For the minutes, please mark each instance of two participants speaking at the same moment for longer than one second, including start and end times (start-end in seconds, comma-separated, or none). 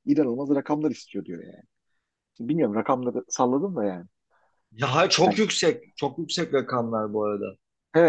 none